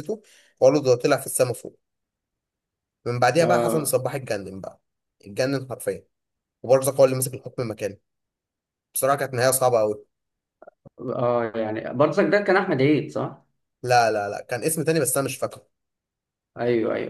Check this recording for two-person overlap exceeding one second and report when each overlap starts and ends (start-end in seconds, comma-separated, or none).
none